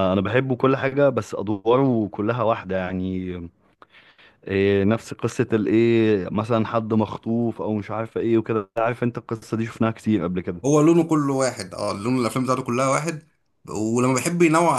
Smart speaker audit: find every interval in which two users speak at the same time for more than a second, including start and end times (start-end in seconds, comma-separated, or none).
none